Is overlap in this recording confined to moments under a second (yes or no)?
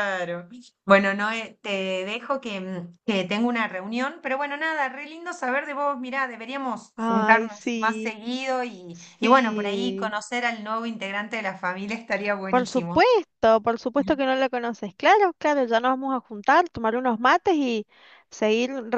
no